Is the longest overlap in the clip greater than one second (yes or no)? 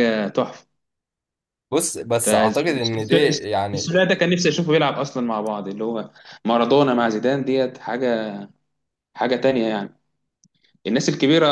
yes